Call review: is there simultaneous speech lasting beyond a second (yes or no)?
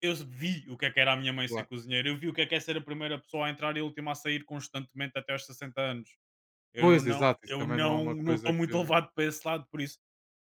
yes